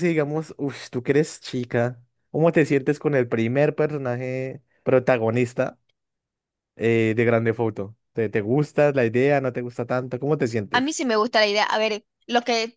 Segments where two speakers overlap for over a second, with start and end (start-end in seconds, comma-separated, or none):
none